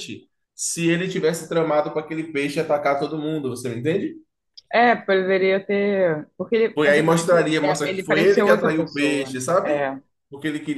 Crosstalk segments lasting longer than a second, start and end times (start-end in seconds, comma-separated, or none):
6.7-9.8